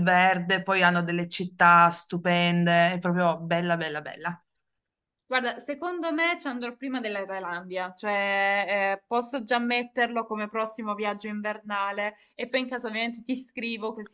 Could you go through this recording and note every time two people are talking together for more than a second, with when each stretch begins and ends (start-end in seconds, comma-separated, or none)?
none